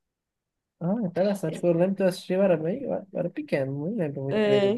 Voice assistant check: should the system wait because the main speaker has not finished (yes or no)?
no